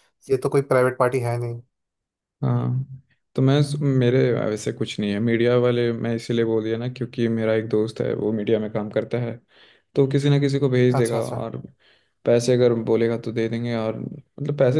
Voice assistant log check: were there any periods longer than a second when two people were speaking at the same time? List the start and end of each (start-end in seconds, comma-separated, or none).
none